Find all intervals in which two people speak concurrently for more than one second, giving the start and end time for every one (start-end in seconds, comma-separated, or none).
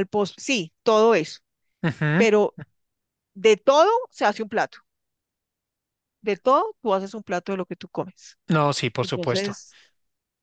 none